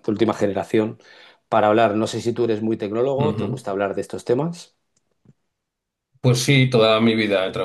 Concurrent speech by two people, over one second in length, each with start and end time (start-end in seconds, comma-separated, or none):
none